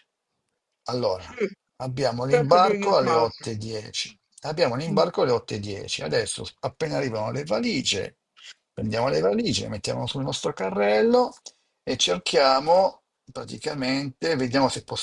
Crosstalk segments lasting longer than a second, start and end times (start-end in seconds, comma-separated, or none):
2.2-3.4